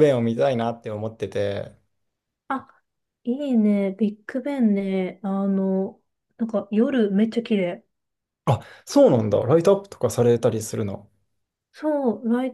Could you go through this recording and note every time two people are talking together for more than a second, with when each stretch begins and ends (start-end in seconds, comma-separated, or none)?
none